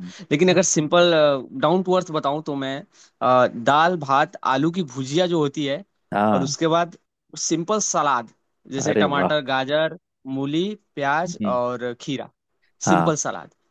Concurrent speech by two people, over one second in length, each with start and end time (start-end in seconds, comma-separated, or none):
none